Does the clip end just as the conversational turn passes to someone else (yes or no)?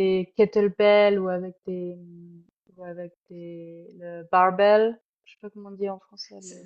yes